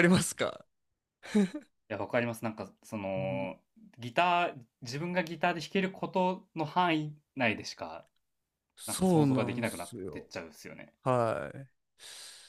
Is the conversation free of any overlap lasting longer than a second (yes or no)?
no